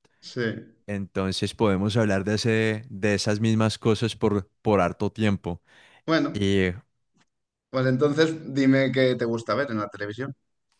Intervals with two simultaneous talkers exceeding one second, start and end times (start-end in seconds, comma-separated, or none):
none